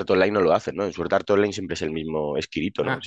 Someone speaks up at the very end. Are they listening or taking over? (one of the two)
taking over